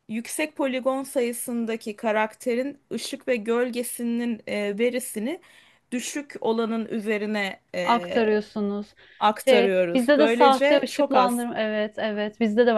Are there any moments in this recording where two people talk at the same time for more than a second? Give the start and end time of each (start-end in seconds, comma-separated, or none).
9.4-11.4